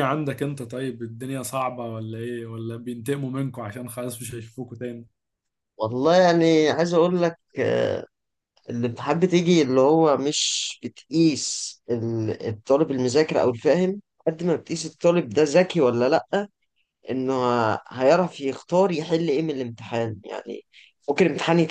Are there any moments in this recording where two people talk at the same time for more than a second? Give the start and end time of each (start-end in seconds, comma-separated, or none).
none